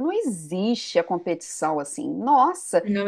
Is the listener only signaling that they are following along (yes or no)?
yes